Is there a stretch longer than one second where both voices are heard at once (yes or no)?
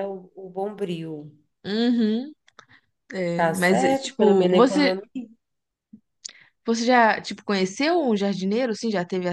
yes